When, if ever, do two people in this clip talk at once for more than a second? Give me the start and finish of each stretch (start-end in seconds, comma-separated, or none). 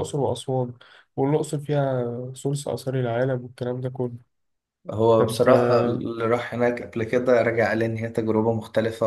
none